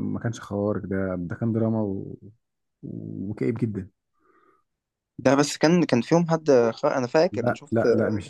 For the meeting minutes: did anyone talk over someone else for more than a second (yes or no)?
no